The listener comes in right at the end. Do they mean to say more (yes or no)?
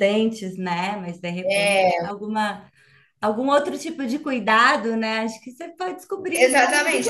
yes